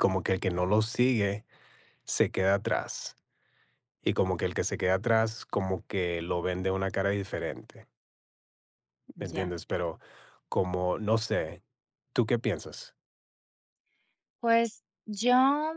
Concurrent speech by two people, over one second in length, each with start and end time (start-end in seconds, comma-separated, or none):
none